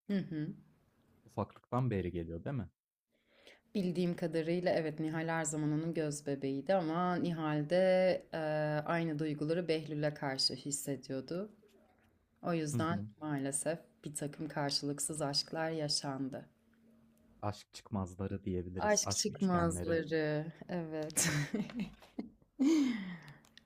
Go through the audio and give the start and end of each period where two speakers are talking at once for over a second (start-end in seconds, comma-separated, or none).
18.8-20.0